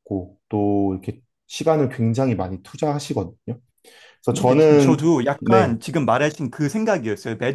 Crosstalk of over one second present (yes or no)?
yes